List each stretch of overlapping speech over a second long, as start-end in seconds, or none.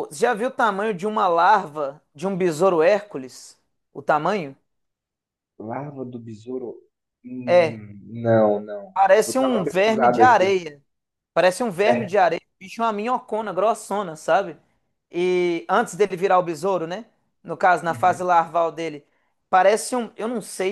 8.9-10.6